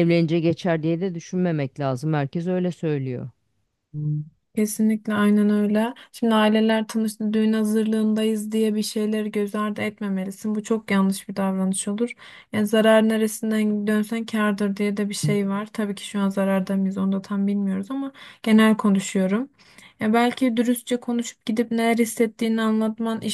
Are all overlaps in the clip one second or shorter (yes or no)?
yes